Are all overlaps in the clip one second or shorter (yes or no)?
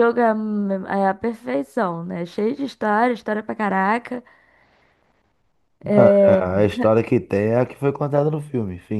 yes